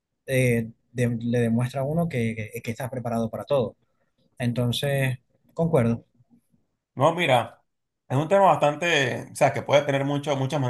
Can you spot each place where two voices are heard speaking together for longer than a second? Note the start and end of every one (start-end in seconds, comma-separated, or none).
none